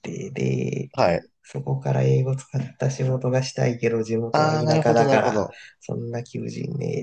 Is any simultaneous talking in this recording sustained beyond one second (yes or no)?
yes